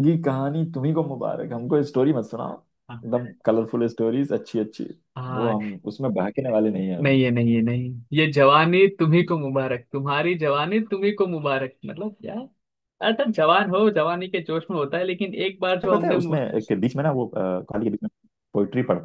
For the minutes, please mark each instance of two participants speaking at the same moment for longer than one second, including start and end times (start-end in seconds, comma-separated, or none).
none